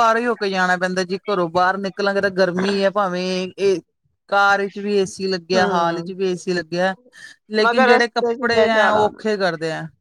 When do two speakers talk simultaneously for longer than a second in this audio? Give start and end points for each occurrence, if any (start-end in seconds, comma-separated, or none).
7.6-9.1